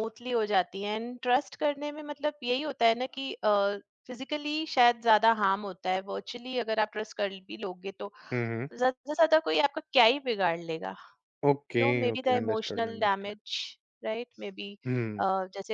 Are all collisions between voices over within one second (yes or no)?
no